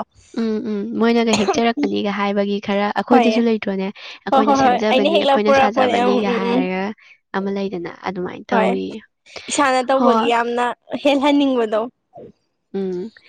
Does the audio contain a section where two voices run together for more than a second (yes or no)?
yes